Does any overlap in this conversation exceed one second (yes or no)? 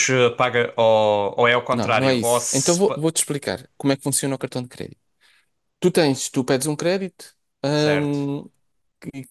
yes